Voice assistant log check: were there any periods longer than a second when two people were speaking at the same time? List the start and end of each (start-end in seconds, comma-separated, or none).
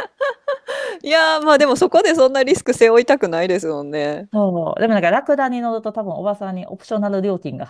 none